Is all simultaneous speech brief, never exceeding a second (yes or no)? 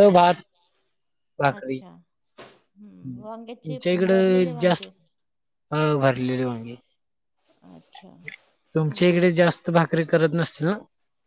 no